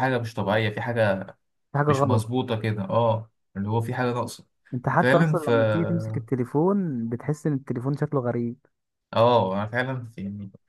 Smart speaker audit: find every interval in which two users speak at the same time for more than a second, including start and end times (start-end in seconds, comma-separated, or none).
none